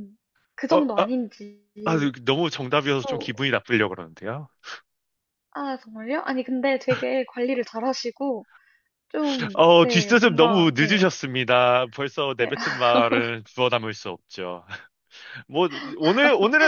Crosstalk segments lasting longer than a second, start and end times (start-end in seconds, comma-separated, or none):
9.6-11.1